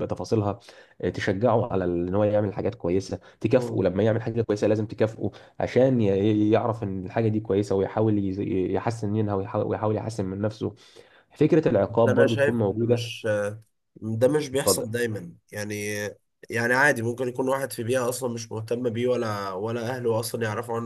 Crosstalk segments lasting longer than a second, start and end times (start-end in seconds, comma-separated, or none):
11.9-13.1